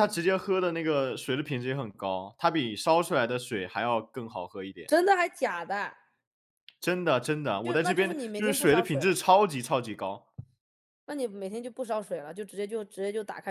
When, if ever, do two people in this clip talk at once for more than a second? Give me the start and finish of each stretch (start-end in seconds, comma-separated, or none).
7.6-9.2